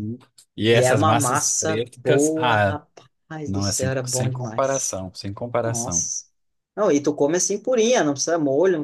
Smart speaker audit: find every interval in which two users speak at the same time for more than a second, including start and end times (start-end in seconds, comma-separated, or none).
0.7-2.8, 3.4-5.0